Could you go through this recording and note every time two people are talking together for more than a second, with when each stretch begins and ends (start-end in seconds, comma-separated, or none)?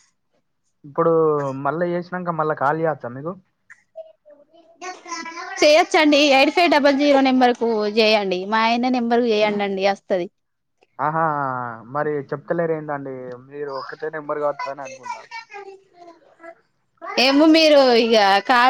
none